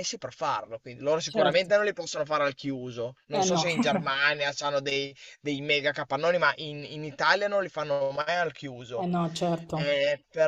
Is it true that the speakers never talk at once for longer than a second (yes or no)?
yes